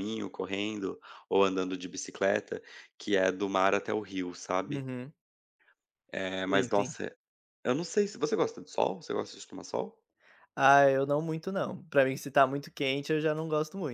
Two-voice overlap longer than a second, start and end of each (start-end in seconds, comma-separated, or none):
none